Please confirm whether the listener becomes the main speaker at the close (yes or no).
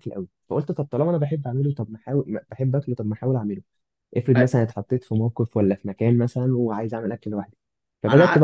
no